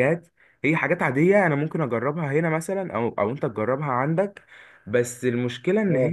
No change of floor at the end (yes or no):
yes